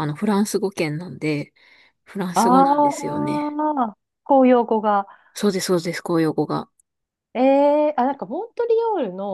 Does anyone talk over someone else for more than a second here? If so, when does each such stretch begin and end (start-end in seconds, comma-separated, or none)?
2.3-3.6